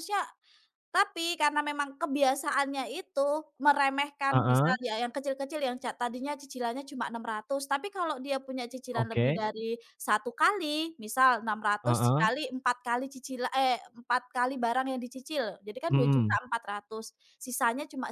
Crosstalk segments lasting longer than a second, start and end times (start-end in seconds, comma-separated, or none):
none